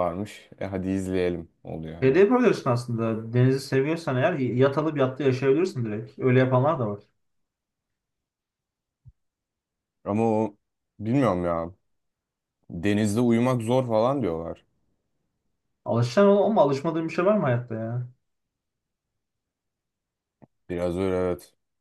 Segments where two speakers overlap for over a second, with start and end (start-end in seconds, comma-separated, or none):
none